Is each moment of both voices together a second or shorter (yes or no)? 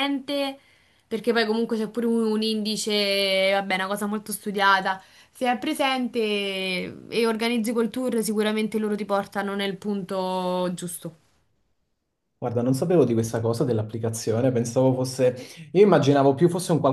yes